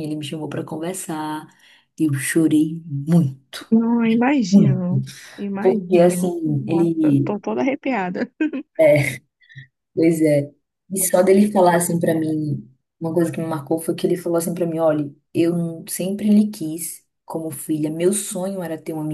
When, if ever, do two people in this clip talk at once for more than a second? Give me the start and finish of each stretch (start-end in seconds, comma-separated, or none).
5.6-7.4